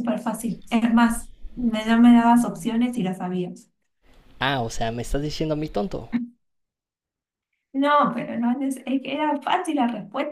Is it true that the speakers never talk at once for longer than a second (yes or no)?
yes